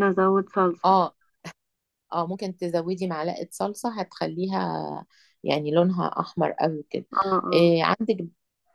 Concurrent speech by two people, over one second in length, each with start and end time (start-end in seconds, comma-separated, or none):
none